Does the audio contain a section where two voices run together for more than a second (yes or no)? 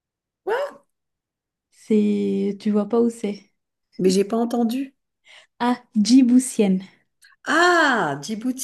no